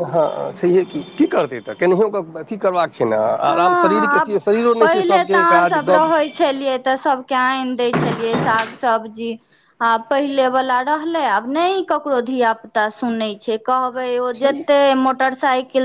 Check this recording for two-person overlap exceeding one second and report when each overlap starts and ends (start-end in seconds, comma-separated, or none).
none